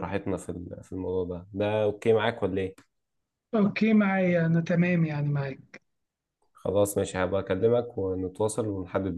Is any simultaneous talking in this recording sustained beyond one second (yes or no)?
no